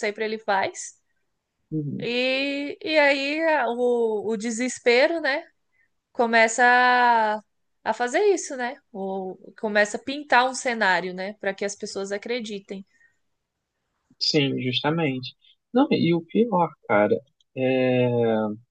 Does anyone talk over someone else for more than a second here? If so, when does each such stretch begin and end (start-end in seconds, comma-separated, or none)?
none